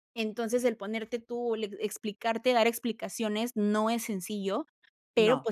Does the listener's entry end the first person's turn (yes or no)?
no